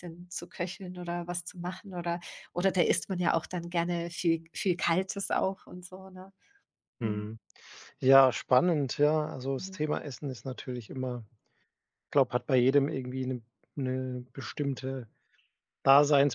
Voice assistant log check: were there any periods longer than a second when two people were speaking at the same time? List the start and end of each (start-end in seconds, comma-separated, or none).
none